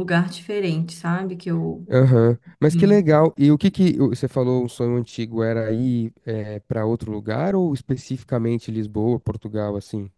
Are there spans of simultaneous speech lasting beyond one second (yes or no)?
no